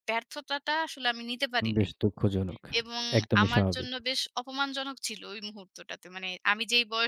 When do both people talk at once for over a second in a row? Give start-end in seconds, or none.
none